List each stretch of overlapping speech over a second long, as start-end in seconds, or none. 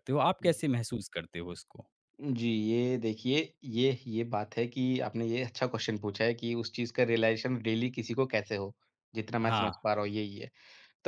none